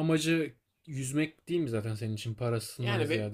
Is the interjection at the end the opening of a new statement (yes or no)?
yes